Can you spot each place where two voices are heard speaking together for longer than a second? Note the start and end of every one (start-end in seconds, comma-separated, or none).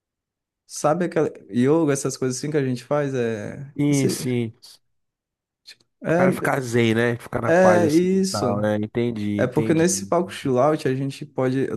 7.5-8.7